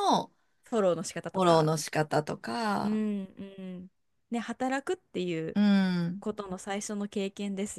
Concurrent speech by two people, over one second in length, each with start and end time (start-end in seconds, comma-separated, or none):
none